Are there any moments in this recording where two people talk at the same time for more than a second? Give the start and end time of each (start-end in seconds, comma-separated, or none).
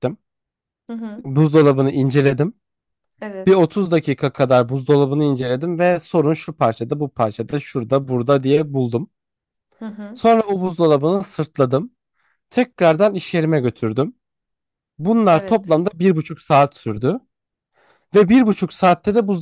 none